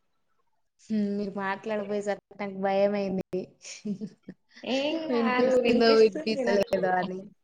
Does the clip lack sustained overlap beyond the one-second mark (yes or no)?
no